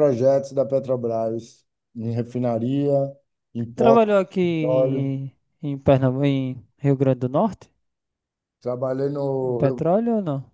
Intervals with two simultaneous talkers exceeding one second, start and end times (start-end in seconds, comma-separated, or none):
3.7-5.1